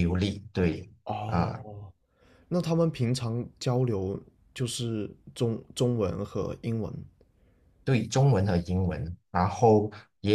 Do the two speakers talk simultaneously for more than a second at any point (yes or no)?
no